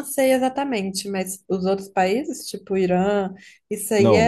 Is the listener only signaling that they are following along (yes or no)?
no